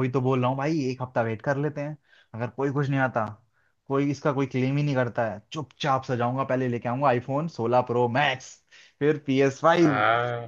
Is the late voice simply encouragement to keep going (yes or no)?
yes